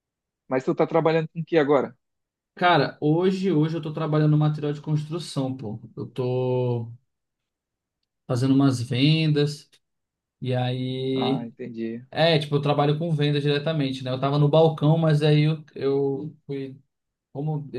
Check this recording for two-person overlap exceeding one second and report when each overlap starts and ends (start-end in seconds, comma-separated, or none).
none